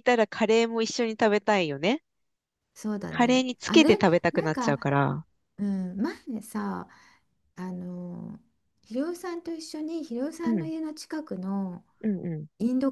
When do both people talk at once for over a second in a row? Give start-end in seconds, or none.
3.1-4.9